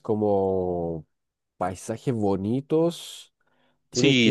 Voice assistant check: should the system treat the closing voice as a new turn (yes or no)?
yes